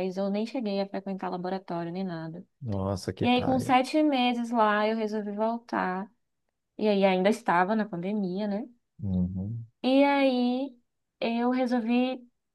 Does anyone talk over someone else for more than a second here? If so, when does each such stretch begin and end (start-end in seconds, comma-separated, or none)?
none